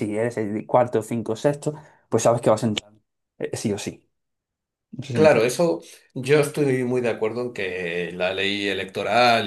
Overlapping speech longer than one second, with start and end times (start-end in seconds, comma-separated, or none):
none